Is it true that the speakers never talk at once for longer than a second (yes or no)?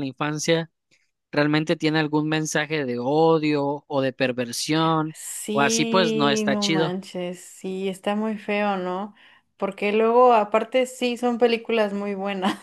no